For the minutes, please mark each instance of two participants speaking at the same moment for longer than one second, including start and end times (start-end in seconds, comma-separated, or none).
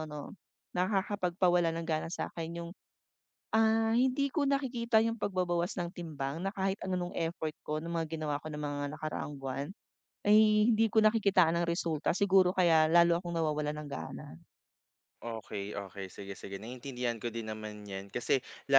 none